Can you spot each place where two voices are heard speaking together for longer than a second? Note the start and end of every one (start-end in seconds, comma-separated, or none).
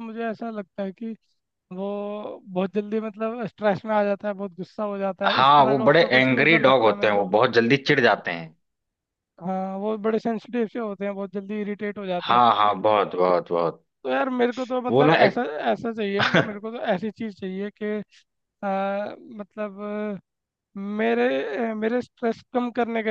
5.3-7.3